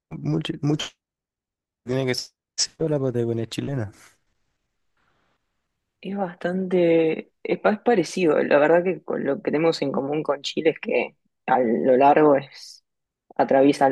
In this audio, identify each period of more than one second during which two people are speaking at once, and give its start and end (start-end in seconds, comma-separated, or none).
none